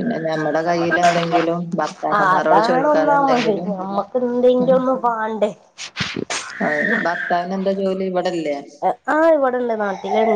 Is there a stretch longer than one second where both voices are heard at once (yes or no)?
yes